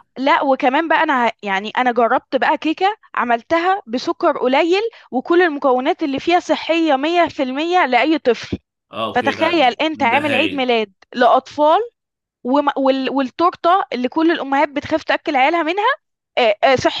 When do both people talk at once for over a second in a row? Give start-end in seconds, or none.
9.1-10.7